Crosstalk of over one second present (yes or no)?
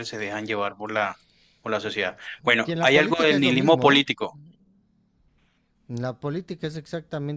yes